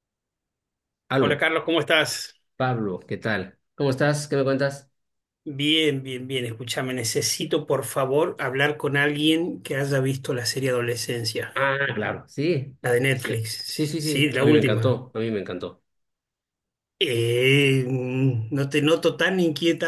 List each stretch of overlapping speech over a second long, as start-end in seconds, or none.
12.8-15.1